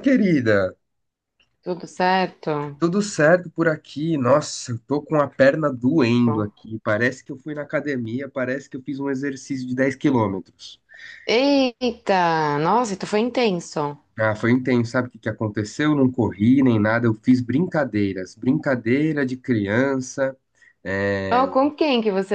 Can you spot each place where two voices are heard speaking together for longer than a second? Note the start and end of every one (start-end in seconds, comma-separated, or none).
none